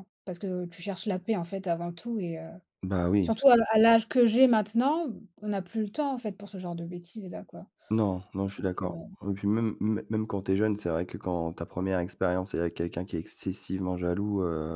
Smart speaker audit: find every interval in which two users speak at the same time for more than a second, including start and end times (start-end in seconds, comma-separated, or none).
none